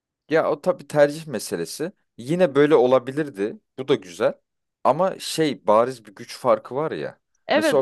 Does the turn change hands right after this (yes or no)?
yes